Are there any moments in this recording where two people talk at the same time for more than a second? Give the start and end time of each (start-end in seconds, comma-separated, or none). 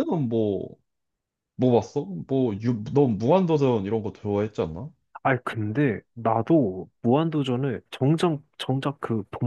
none